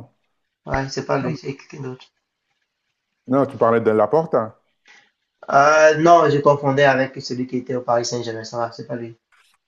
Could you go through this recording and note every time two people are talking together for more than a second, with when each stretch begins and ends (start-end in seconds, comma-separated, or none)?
none